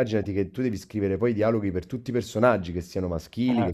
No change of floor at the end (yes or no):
yes